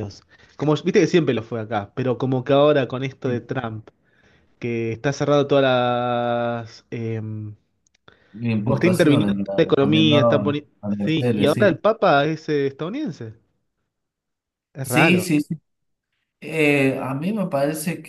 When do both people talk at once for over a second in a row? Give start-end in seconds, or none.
8.6-11.8